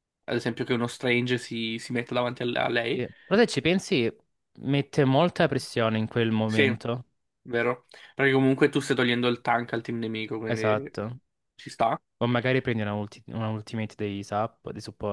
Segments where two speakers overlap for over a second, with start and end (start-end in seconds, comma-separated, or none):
none